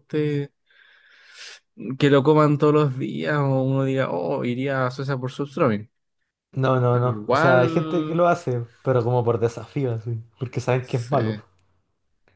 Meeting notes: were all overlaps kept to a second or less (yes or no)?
no